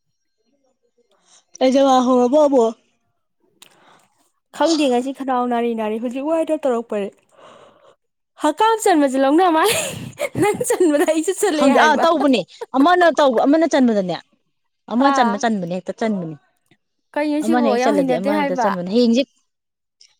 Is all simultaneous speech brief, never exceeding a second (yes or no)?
no